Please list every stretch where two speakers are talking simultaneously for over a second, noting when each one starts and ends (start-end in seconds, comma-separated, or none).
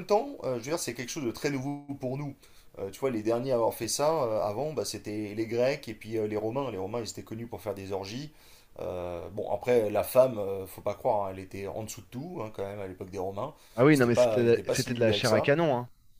13.9-15.5